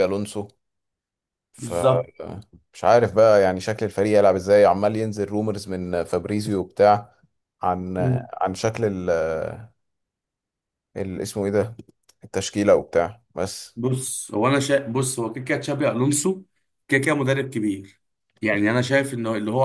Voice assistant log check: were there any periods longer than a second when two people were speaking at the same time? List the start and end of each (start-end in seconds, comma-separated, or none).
none